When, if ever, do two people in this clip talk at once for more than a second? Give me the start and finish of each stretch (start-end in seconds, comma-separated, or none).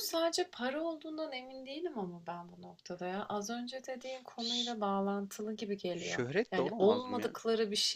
5.9-7.3